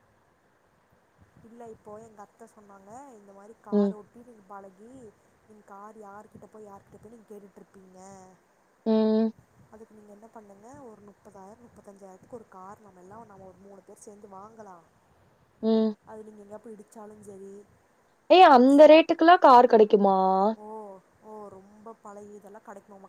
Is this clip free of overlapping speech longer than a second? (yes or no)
yes